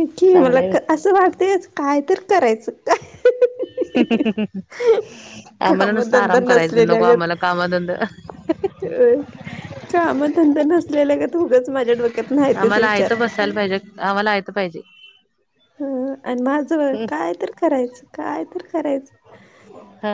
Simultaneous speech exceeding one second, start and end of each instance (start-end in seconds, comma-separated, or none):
5.7-7.0